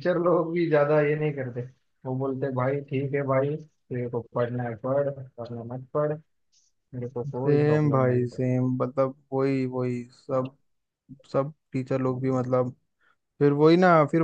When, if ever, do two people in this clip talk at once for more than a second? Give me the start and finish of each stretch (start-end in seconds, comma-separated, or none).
7.1-8.4